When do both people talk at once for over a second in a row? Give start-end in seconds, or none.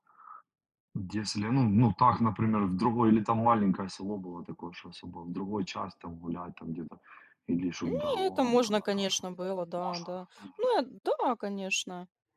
7.8-9.1